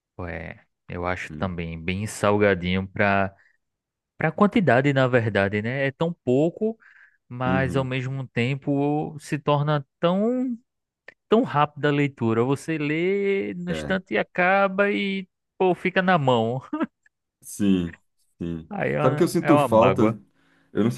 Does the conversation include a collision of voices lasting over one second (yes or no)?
yes